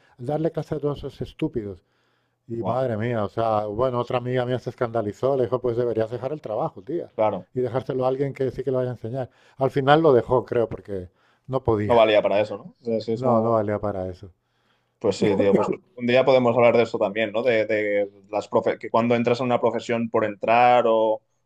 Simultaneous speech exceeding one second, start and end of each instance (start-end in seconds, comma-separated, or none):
none